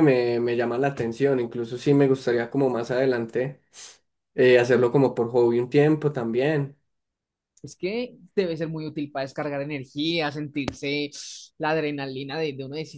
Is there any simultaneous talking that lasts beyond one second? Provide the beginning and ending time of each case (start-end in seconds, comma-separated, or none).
none